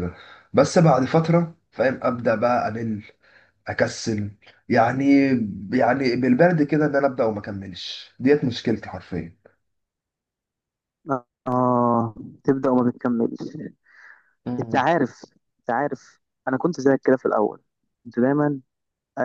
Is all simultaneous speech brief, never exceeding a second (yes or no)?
yes